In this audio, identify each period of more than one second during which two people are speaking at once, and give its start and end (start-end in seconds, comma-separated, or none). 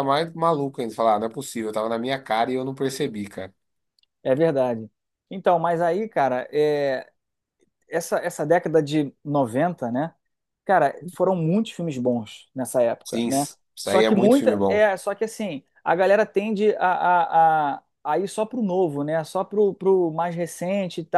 13.0-14.8